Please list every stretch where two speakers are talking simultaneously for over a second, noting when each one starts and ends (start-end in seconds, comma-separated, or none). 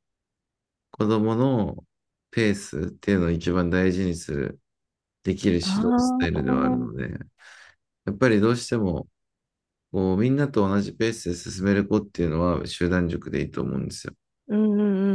5.6-7.0